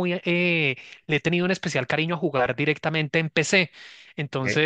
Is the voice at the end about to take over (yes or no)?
no